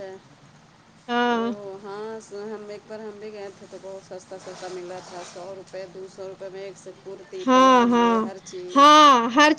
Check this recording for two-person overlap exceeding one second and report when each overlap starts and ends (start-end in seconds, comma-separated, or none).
none